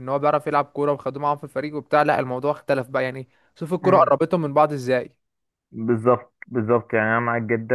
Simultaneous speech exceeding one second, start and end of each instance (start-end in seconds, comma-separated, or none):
none